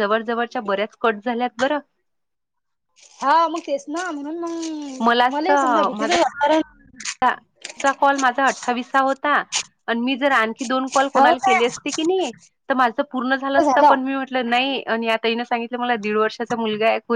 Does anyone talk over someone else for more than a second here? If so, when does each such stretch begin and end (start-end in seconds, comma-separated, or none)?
none